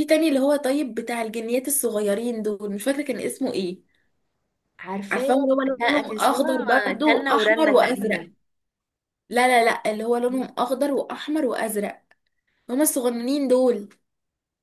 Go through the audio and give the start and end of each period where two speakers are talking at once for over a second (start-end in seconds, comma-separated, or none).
5.1-8.2